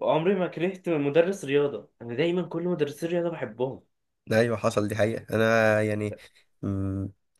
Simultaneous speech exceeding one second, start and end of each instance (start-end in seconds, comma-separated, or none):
none